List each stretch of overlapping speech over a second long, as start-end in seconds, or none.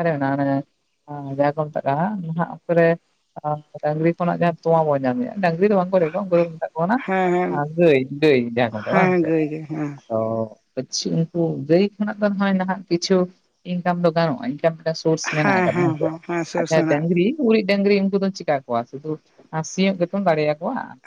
none